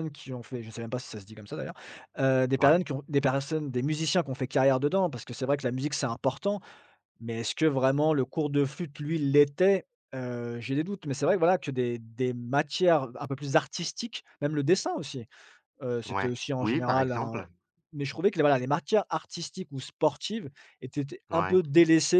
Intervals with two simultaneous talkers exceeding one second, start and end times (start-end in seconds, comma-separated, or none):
16.1-17.4